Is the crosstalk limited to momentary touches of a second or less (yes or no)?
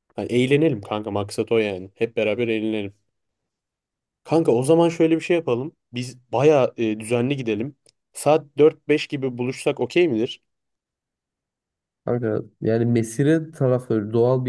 yes